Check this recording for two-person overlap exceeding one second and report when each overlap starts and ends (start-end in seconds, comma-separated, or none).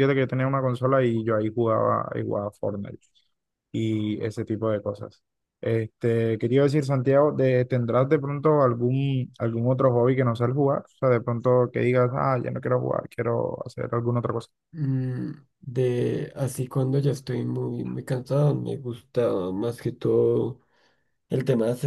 none